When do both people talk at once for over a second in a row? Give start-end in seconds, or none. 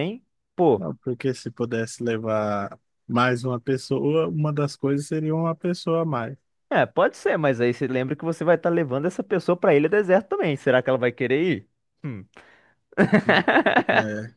none